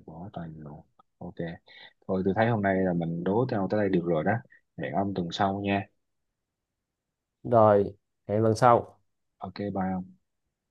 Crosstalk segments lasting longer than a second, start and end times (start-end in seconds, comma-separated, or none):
none